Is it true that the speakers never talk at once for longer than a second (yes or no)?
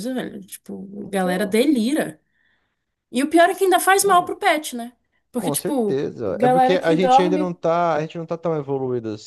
no